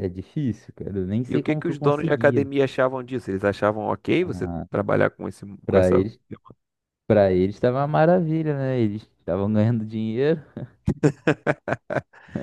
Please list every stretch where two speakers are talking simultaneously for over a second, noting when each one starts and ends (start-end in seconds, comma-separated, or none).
1.3-2.5